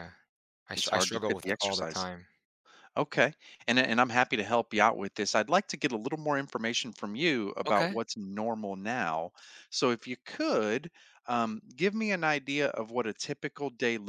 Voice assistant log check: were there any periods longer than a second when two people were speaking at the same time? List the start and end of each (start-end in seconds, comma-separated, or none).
0.7-2.0